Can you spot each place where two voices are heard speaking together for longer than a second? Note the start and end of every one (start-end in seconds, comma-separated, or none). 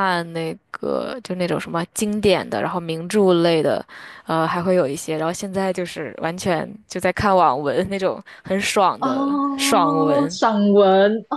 9.0-10.4